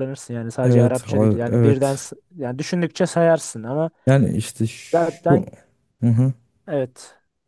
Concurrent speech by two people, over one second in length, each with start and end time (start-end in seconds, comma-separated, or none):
0.6-2.1